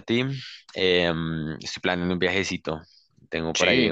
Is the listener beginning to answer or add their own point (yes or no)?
no